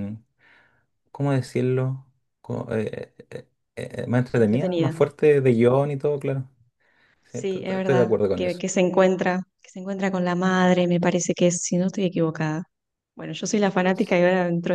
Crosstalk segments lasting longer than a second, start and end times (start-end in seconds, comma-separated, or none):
7.3-8.6